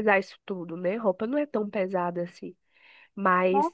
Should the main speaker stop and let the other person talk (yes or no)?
no